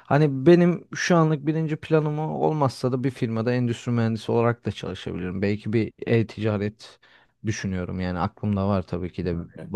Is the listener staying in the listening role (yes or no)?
yes